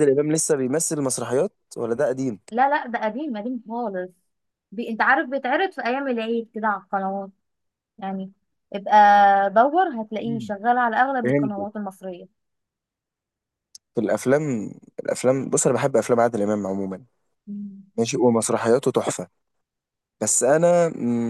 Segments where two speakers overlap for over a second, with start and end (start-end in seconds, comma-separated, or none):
none